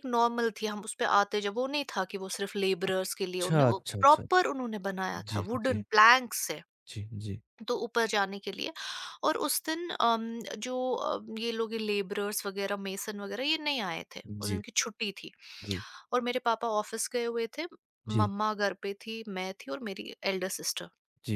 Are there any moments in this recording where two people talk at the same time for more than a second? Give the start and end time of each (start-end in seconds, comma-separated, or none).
2.9-4.5